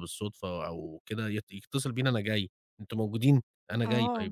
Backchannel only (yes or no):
no